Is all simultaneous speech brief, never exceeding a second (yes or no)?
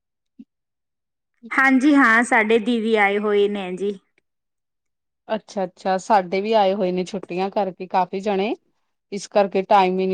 yes